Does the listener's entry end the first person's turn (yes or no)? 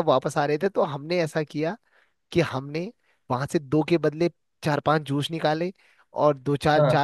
no